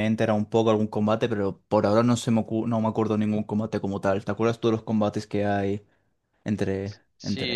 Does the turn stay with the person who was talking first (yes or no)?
no